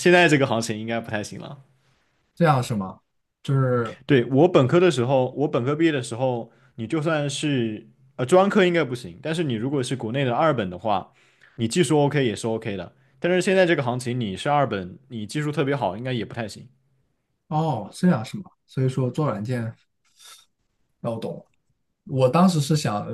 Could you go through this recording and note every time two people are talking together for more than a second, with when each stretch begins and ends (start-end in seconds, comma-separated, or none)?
none